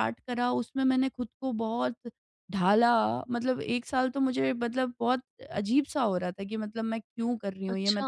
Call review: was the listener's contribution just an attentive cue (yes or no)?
yes